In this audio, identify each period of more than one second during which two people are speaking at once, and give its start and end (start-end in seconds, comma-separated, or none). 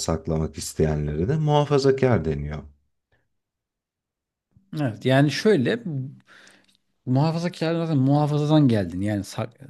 none